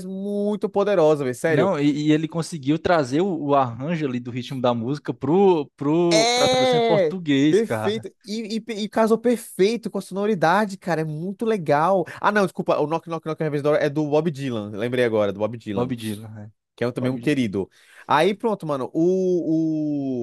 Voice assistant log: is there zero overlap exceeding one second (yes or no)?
no